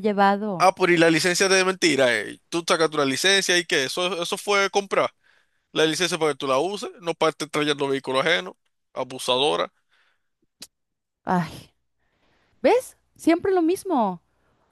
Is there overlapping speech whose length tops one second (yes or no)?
no